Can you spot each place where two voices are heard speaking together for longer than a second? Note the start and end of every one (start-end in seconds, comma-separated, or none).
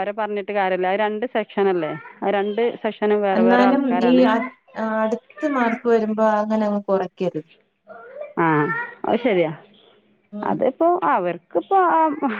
none